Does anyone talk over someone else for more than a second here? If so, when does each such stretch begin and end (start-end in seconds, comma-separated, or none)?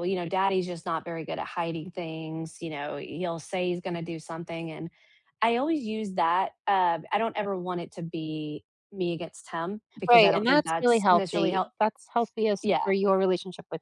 10.1-11.7